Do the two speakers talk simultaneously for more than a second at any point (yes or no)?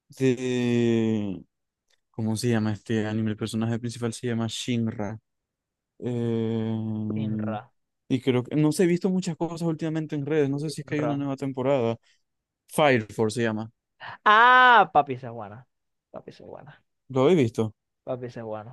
no